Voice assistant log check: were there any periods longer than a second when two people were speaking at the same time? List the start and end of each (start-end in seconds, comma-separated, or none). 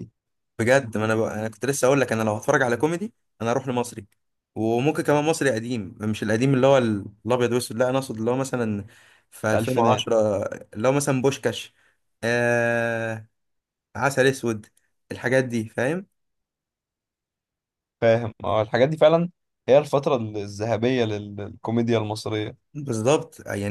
none